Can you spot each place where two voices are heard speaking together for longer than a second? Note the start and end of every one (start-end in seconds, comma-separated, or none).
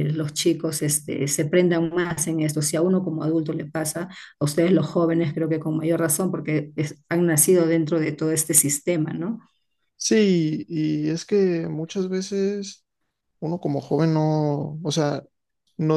none